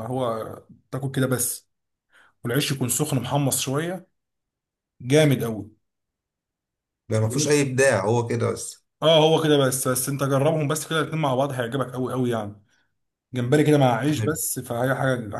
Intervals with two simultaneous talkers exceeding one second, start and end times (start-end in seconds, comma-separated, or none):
none